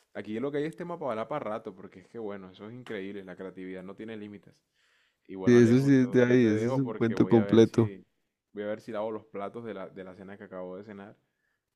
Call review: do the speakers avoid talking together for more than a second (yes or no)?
no